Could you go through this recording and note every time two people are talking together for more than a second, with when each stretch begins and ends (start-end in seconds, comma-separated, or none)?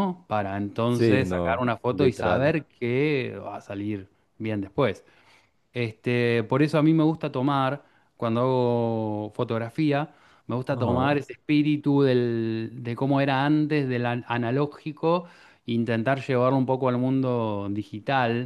0.9-2.5